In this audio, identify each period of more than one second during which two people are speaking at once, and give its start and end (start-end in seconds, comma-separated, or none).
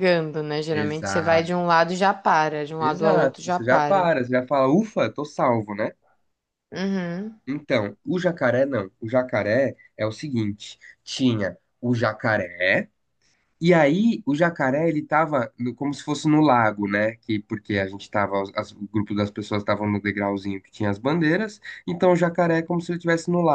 2.8-4.1